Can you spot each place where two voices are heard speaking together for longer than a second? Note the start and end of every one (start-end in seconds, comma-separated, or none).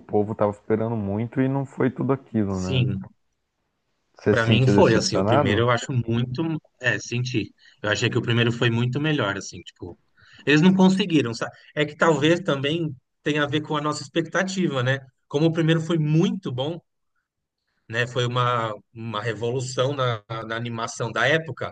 4.3-5.6